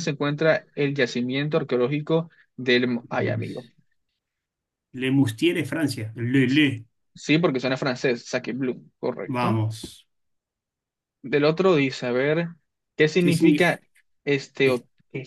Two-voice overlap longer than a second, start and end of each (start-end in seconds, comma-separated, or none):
none